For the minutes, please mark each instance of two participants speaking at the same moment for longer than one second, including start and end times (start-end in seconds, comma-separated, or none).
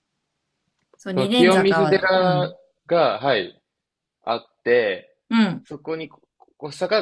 1.1-2.5